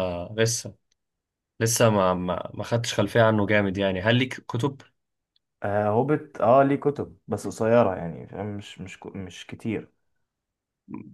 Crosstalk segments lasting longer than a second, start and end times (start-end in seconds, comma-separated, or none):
none